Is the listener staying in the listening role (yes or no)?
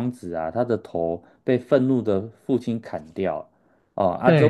yes